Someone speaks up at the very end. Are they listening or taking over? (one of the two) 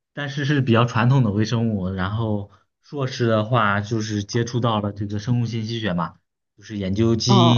taking over